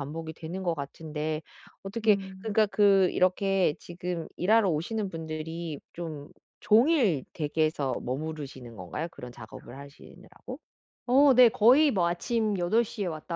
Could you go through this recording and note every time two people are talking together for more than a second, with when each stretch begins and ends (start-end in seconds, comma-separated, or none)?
none